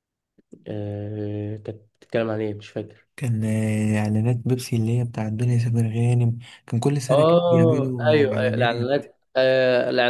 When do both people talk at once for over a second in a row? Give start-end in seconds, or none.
7.1-8.9